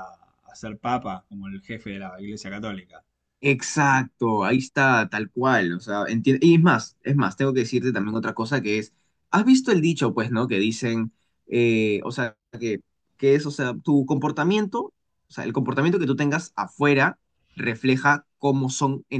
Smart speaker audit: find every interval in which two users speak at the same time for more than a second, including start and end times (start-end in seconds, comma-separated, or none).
none